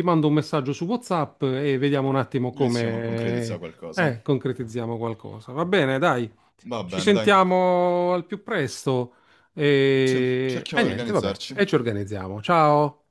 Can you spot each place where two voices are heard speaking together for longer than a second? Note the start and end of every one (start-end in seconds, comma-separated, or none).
2.5-4.1, 10.0-11.6